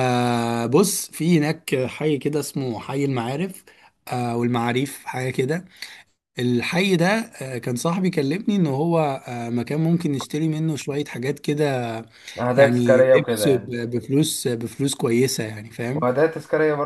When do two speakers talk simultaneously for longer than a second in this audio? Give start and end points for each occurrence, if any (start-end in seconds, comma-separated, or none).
12.6-13.8